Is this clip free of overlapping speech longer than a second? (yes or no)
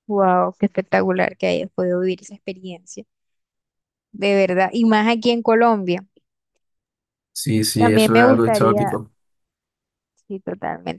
no